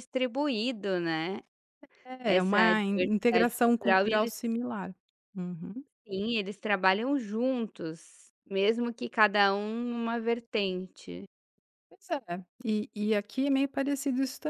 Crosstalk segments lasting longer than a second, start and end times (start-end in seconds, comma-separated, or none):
2.2-4.4